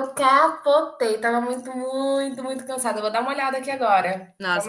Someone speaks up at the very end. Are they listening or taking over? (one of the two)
taking over